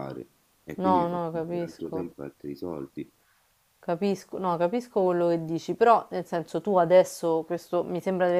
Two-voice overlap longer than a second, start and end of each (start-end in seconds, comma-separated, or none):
0.8-2.1